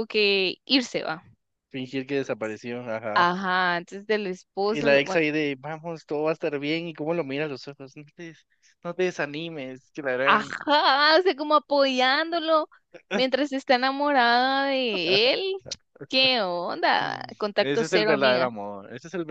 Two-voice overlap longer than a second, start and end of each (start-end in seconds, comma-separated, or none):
17.0-18.5